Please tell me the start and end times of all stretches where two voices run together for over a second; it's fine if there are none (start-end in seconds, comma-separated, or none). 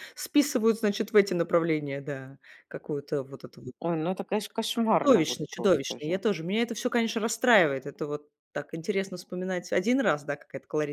4.9-6.2